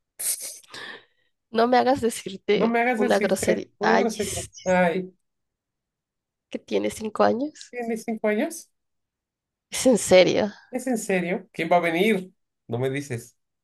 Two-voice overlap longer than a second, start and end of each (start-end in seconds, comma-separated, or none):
2.5-4.9